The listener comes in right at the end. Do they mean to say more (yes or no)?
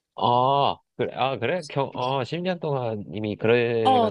yes